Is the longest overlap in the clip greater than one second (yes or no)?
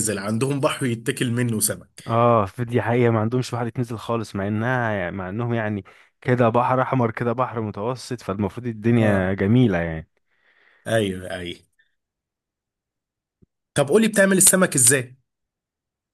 no